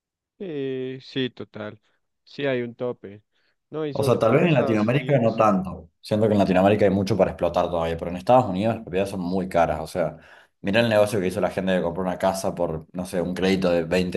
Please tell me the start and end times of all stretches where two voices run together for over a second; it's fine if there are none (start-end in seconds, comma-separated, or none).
3.9-5.5